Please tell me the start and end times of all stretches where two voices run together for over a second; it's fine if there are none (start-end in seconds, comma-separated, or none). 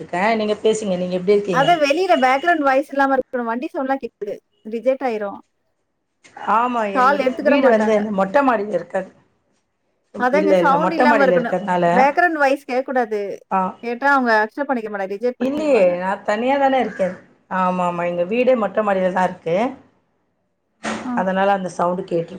none